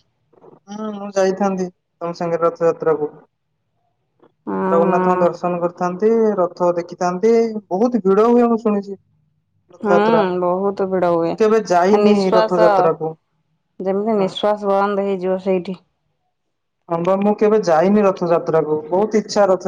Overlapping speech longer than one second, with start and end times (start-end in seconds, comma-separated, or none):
9.8-11.3